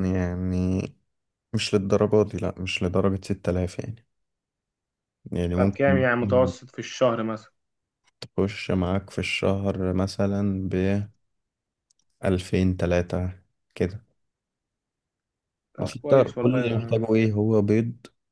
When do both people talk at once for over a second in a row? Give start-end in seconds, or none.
15.8-17.2